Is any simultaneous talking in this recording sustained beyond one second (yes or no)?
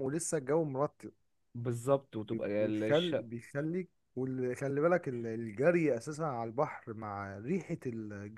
no